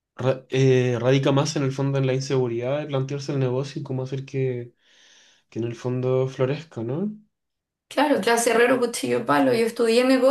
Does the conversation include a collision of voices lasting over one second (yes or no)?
no